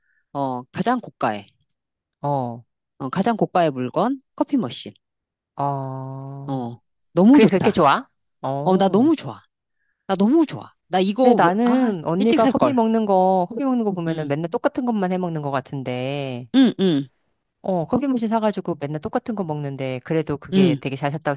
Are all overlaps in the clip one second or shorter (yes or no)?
no